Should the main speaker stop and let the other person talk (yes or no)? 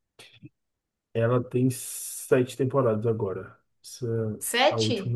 no